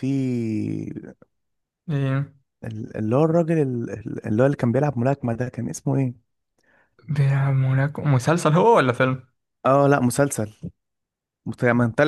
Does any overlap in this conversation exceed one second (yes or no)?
no